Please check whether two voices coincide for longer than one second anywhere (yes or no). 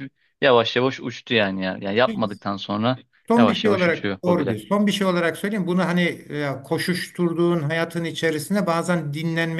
yes